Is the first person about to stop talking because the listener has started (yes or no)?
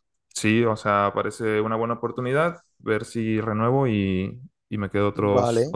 yes